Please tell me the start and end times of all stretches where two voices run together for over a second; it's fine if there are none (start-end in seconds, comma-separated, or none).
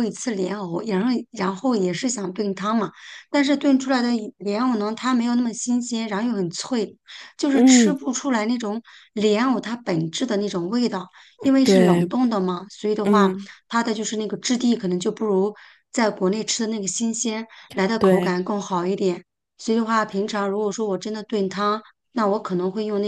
none